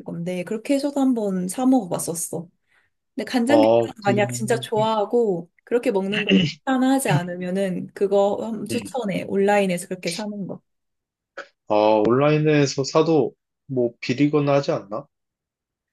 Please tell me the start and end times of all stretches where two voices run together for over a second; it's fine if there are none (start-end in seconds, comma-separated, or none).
3.5-4.7